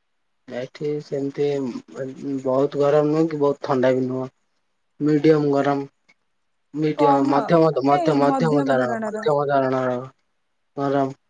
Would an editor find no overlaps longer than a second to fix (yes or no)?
no